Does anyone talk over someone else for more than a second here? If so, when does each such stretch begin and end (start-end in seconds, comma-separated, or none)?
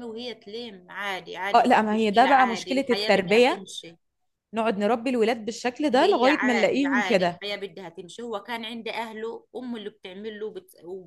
1.5-3.6, 5.9-7.4